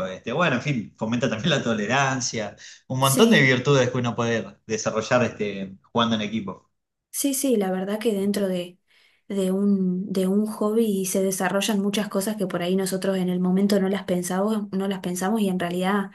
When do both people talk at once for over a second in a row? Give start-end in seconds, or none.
none